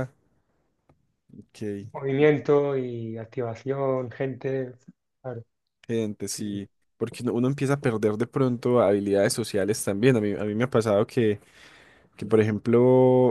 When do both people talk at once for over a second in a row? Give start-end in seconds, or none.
none